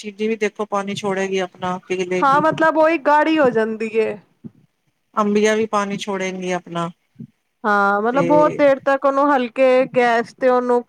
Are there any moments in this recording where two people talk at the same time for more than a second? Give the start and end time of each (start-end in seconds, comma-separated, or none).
none